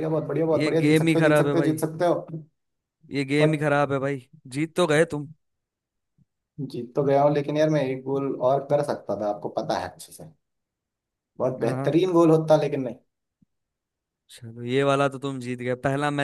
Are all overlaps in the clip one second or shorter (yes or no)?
no